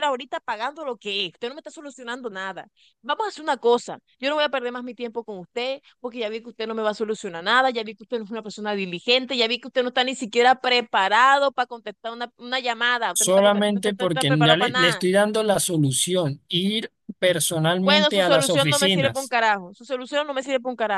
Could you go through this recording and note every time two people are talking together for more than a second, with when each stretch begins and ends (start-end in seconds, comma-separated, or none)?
13.1-15.0, 17.8-19.3